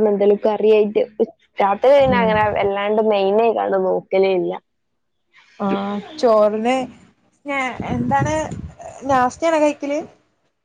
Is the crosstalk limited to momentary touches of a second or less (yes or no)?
yes